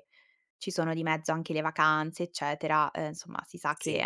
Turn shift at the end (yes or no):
no